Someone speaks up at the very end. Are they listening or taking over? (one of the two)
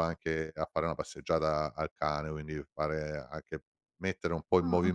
taking over